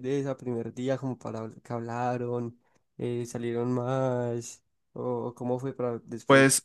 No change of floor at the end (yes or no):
no